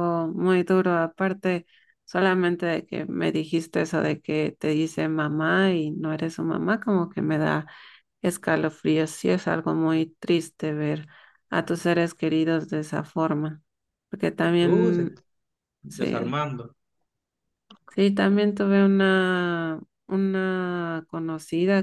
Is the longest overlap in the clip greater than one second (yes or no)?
no